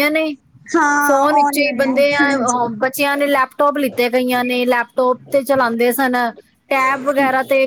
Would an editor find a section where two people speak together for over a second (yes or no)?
yes